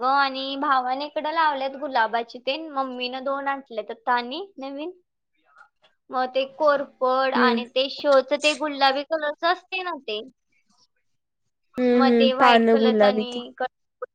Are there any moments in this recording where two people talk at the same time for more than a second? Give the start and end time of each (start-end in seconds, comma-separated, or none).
12.0-13.4